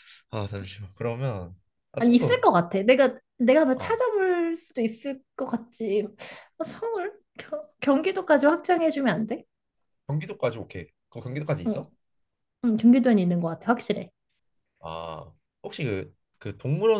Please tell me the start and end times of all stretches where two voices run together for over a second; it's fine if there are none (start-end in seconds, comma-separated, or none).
none